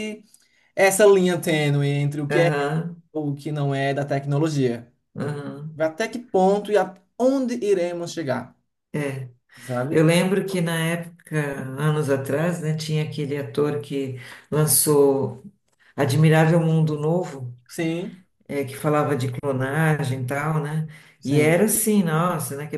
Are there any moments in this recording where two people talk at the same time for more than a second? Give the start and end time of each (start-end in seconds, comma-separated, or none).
none